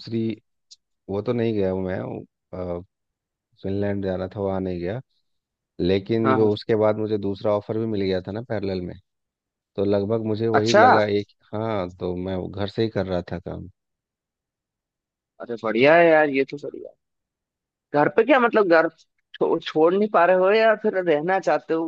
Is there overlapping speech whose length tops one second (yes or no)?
no